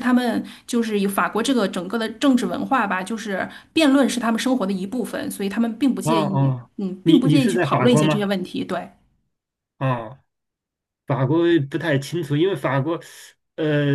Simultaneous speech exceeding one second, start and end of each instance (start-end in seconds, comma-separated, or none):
6.0-8.3